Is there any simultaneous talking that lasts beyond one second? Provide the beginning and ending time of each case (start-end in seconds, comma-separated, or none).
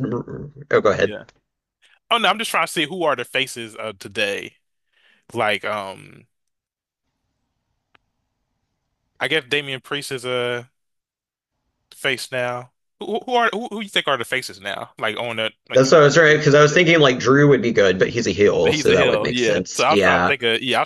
18.7-20.3